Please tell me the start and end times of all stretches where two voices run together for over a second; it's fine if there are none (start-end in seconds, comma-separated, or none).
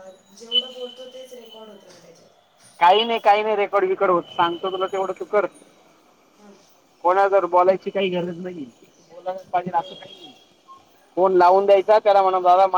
none